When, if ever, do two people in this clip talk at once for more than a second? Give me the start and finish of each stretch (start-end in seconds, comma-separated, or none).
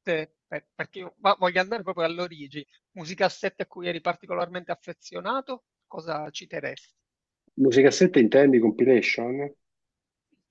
none